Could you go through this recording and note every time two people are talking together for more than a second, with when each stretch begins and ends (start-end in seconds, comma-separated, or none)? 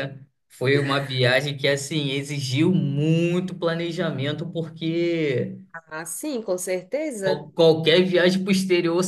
none